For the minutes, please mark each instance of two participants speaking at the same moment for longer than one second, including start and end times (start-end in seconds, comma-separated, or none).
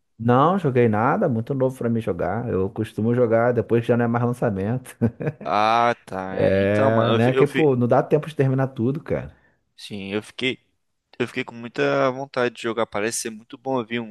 6.3-7.7